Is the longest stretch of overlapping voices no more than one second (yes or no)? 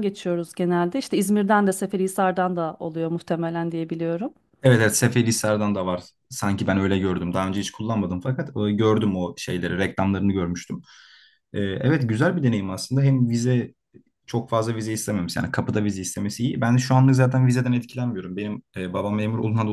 yes